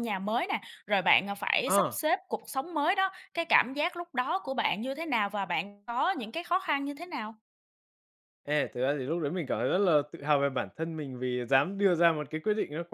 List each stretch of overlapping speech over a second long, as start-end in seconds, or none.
none